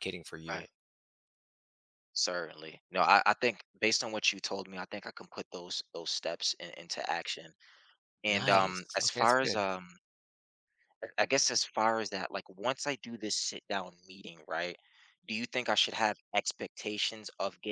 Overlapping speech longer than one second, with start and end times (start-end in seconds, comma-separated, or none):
8.3-9.7